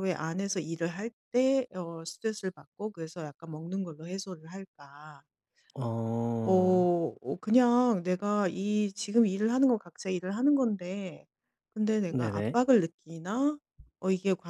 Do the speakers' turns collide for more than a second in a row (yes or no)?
no